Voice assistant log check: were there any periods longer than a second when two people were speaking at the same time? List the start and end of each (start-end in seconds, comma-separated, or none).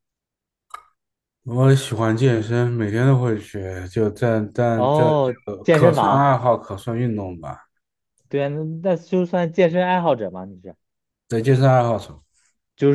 4.7-6.3